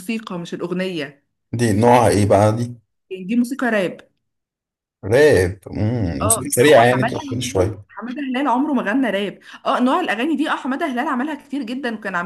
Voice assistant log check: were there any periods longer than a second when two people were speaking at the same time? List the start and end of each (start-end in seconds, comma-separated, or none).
6.2-7.8